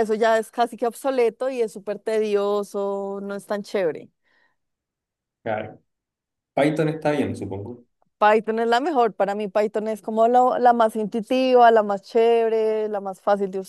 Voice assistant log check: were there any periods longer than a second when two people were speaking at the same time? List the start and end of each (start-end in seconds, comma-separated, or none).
none